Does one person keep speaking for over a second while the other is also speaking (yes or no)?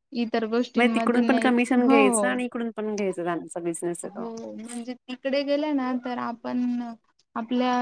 yes